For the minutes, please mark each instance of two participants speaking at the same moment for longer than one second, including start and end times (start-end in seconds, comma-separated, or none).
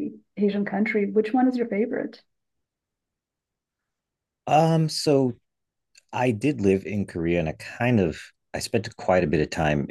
none